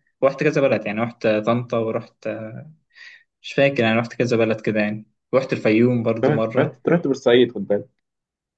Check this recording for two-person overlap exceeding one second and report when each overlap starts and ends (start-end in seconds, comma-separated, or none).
none